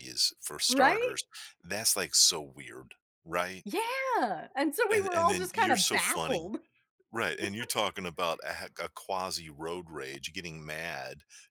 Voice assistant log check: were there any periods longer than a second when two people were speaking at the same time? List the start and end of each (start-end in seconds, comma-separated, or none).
4.9-6.5